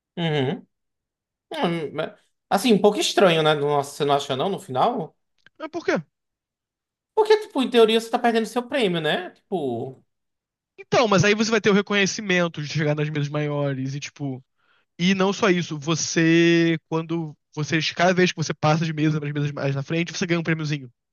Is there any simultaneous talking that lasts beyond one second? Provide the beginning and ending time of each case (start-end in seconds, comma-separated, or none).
none